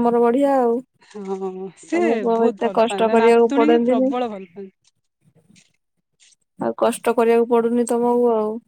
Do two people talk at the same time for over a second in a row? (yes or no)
yes